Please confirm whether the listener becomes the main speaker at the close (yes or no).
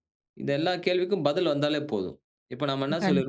no